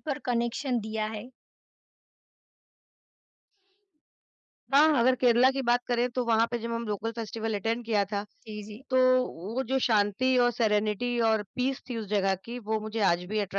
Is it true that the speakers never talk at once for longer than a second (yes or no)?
yes